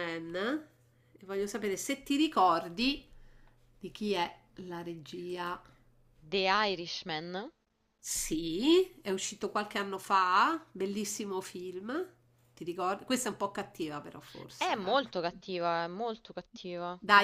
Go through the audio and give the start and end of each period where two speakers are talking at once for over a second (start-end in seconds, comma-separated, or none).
none